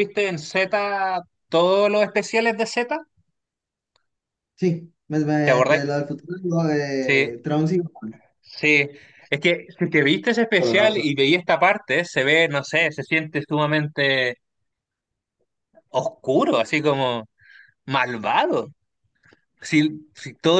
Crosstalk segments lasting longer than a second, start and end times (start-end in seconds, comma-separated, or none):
none